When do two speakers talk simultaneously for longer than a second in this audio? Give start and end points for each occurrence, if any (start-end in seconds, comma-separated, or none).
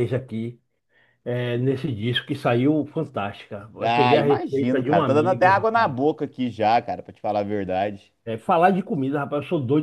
3.8-5.9